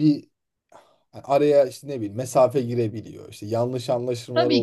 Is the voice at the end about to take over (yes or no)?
yes